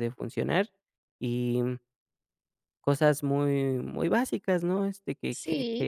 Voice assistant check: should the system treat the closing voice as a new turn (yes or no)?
yes